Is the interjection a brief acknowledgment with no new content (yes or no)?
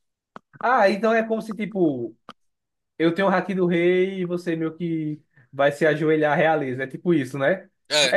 yes